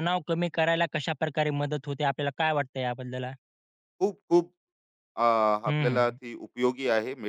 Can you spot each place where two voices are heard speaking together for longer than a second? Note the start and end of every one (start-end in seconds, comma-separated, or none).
none